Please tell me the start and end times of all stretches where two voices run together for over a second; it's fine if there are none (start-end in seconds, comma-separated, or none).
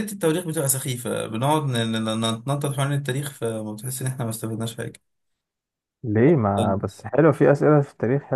none